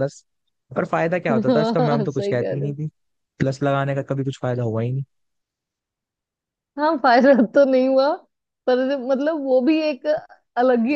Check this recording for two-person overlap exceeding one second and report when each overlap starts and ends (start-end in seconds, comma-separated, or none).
1.3-2.8